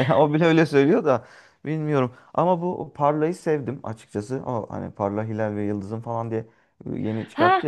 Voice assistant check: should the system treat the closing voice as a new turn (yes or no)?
yes